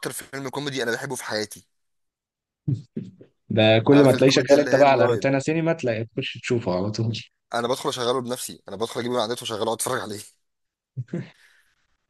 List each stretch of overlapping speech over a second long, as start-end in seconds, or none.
3.9-5.3